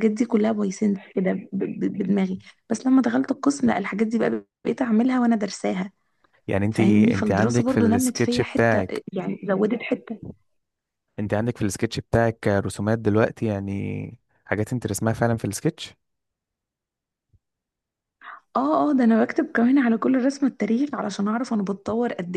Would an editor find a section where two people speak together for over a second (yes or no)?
yes